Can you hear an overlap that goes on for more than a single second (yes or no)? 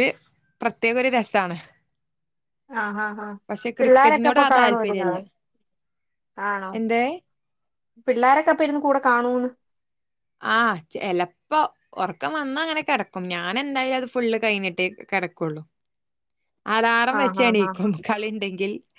yes